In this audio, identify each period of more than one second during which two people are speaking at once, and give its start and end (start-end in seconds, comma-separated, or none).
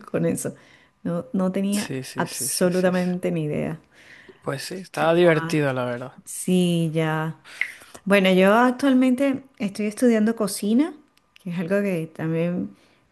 1.7-3.1